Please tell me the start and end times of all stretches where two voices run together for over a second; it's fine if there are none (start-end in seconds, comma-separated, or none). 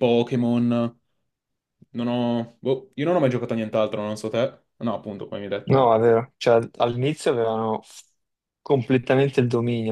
none